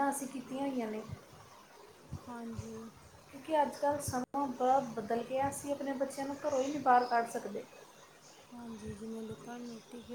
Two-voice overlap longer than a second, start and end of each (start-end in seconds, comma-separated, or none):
none